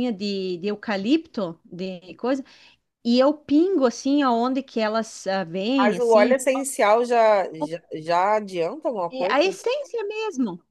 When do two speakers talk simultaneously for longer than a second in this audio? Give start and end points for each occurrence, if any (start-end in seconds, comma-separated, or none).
none